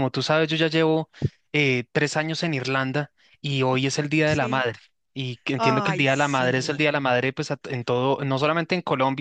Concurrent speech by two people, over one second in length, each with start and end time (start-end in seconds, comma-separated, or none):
5.6-6.9